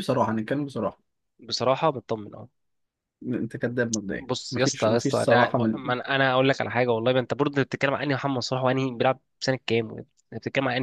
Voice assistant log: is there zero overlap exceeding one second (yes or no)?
no